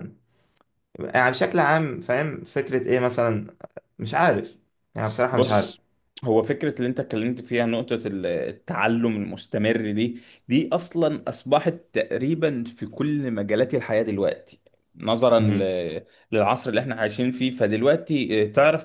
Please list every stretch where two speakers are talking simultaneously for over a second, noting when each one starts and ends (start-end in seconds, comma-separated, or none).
none